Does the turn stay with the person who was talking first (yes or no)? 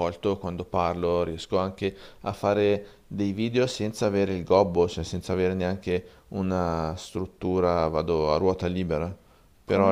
no